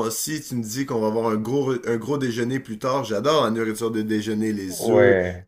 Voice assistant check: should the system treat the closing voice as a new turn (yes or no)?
no